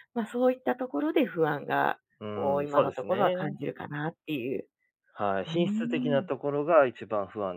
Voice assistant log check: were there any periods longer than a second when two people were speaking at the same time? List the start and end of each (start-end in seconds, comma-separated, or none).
2.2-3.5